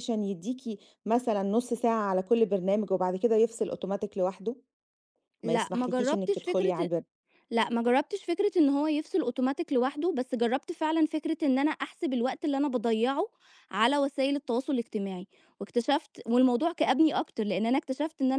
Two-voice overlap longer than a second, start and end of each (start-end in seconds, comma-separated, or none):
5.4-6.9